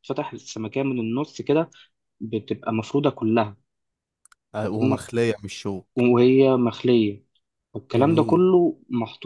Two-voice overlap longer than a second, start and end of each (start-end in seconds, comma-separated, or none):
none